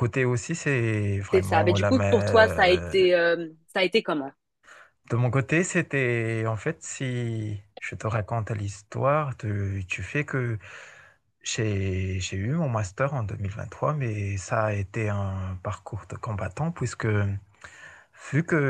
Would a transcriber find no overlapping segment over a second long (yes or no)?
no